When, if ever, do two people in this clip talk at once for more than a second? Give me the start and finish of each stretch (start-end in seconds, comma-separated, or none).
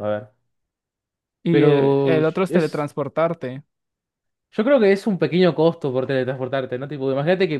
1.5-2.9